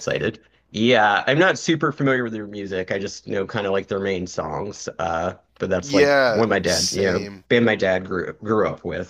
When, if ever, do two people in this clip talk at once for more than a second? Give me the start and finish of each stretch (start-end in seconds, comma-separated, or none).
5.8-7.4